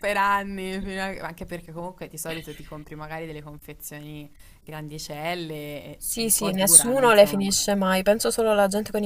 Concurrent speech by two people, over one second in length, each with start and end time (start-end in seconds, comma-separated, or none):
6.0-7.5